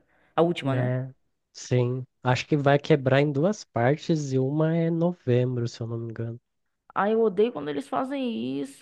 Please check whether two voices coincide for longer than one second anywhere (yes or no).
no